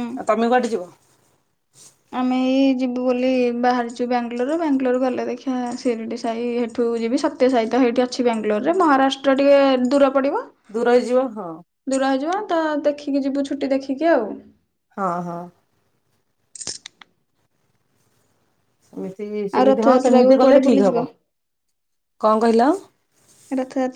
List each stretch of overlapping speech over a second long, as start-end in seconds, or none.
19.6-21.0